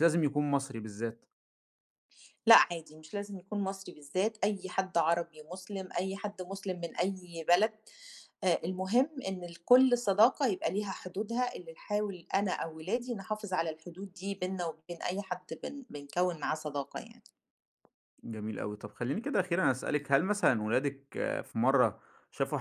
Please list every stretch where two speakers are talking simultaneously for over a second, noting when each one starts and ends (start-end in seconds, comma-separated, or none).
none